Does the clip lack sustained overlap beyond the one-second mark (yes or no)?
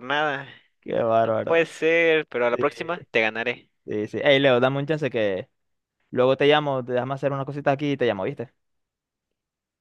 yes